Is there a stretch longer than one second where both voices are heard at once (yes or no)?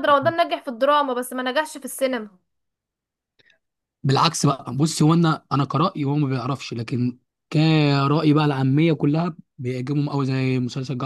no